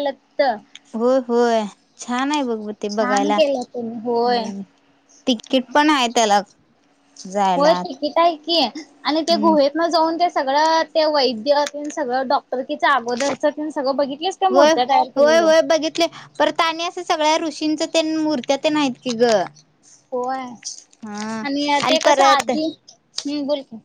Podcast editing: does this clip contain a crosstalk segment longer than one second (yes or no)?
yes